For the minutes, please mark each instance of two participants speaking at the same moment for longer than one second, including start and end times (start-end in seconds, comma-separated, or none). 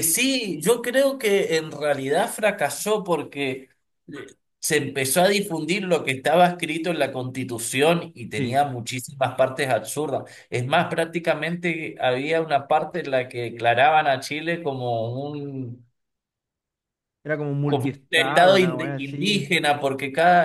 17.6-19.5